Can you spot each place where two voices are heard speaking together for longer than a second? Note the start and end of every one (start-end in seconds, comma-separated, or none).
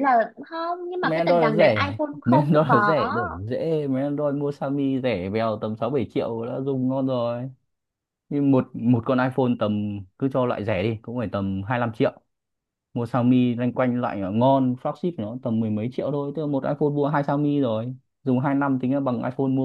1.0-2.9